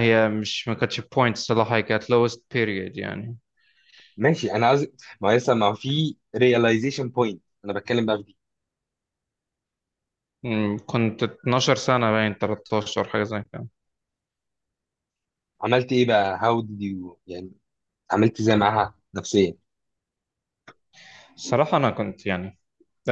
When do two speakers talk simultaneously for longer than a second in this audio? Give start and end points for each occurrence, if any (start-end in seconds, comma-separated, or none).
none